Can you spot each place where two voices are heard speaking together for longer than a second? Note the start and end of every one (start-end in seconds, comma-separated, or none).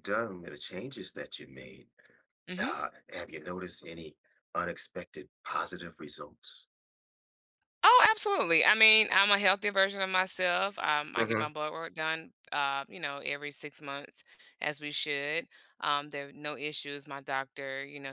none